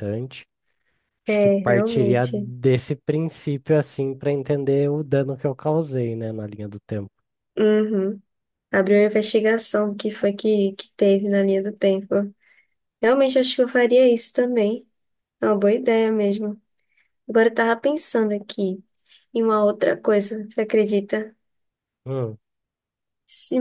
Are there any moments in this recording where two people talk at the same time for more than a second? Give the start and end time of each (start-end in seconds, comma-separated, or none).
1.3-2.5